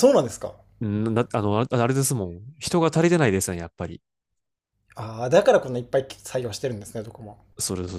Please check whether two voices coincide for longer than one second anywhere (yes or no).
no